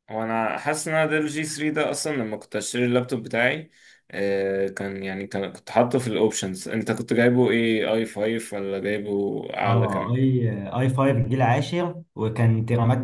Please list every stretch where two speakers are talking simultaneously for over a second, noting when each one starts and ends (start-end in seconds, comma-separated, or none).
none